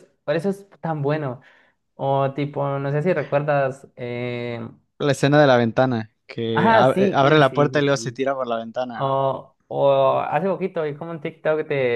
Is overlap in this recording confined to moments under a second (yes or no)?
no